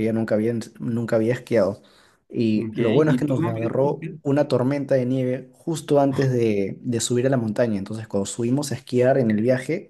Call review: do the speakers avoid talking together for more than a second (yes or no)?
no